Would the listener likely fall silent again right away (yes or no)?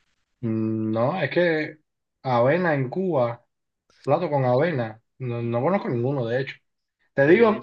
yes